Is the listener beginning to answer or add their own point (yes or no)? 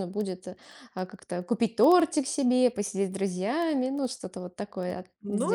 yes